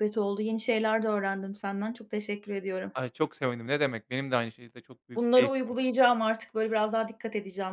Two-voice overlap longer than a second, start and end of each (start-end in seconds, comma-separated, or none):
none